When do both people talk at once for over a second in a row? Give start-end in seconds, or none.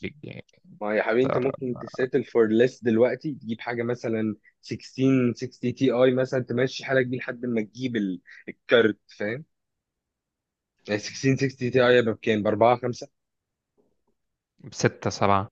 none